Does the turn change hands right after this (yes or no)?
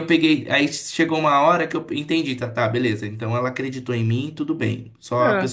no